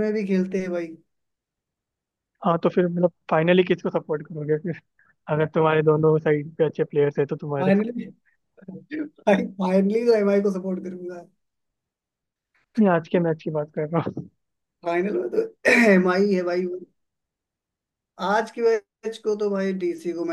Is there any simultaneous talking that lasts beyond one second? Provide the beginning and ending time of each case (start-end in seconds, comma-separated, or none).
none